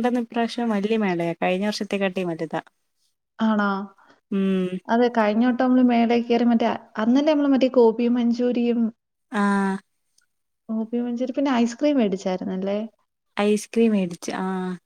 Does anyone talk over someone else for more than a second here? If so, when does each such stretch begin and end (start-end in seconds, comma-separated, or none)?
none